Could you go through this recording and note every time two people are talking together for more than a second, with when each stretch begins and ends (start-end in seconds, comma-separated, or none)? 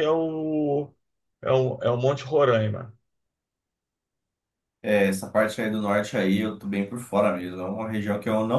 none